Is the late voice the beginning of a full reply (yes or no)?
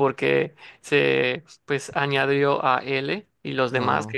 no